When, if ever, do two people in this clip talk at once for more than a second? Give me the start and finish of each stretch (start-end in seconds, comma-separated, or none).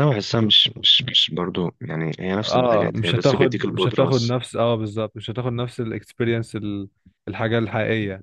2.5-4.3